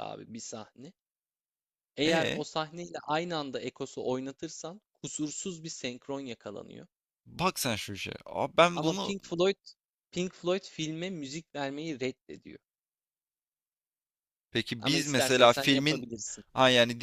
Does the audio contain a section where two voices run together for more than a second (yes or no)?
yes